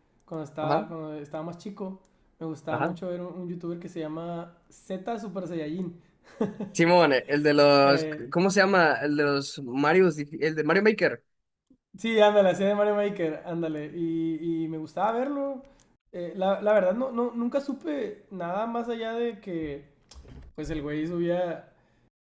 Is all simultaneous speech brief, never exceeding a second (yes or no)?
yes